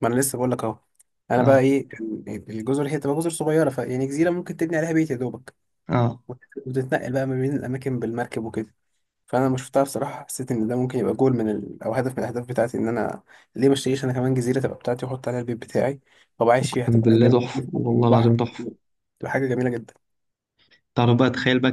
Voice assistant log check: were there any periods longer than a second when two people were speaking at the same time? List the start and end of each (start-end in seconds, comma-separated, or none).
16.6-18.4